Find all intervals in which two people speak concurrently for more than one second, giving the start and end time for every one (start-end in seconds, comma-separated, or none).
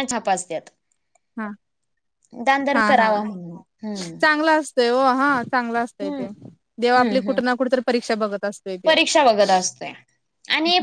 none